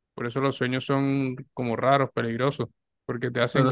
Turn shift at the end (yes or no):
no